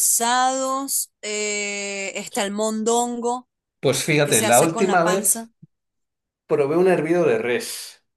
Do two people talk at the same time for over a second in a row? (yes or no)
yes